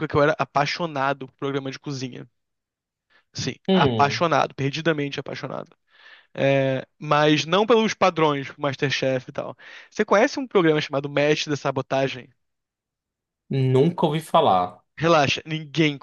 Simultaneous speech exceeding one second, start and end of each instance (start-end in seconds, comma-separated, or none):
none